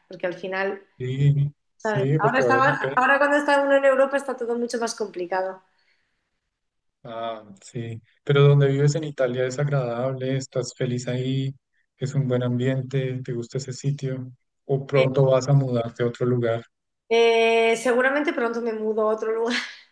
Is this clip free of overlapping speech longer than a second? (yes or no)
no